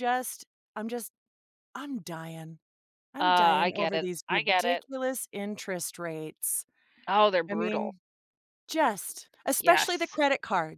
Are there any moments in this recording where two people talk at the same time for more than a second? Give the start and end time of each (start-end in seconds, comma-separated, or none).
3.2-4.8